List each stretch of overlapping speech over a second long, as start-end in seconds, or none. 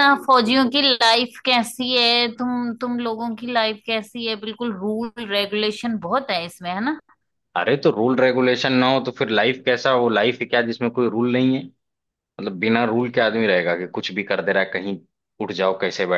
none